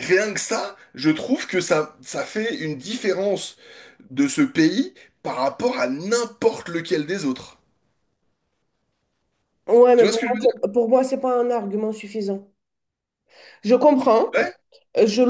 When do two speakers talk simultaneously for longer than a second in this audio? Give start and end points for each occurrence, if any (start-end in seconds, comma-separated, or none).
none